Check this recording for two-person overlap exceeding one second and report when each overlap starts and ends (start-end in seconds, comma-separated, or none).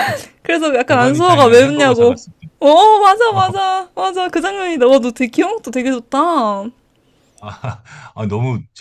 0.9-2.2